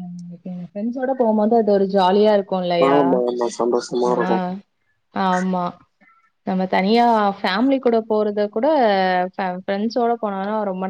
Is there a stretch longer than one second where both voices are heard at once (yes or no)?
no